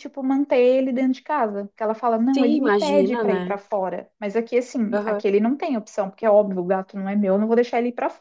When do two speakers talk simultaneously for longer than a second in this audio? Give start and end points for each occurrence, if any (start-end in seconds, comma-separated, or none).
2.3-3.6